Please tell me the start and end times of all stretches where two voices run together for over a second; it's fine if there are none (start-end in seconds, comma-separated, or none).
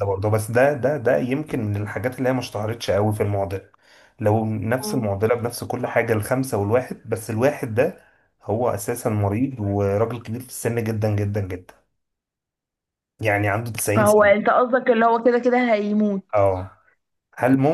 none